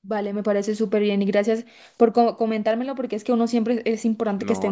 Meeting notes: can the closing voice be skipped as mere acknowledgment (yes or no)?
no